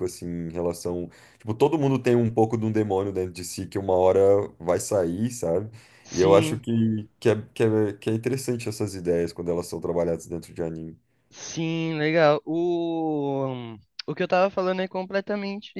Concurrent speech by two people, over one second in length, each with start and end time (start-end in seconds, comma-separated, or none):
none